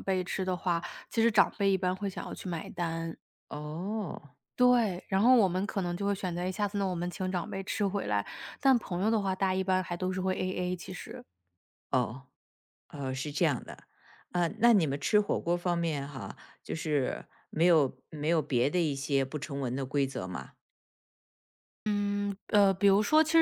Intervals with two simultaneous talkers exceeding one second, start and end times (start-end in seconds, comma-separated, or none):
none